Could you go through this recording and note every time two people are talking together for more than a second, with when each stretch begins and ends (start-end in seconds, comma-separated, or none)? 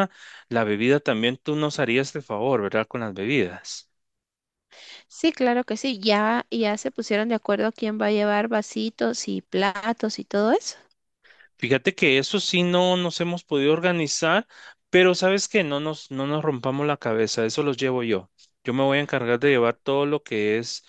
none